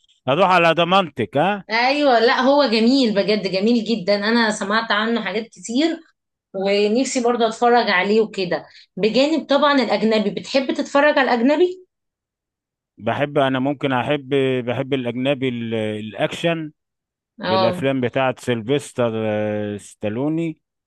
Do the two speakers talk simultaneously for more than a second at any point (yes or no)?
no